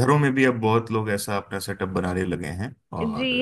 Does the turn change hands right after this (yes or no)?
yes